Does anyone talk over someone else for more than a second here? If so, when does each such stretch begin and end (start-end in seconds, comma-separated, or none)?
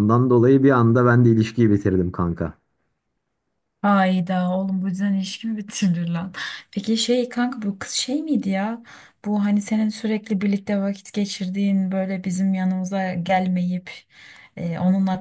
none